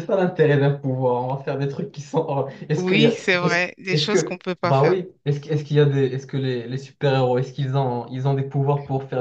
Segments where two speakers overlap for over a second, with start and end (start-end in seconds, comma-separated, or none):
2.8-5.0